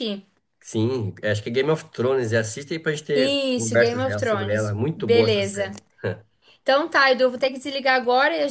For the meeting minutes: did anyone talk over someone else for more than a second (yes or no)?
yes